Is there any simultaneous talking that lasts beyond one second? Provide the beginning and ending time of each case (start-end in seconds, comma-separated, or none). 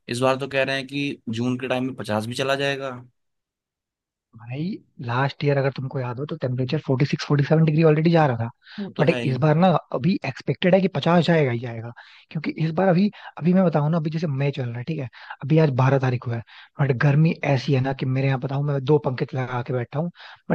none